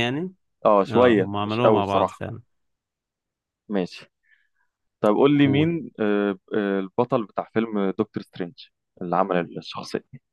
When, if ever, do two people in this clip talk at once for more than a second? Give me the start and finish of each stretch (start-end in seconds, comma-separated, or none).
0.9-2.2